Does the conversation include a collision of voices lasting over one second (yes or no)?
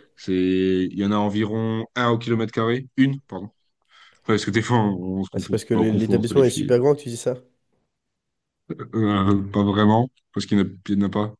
yes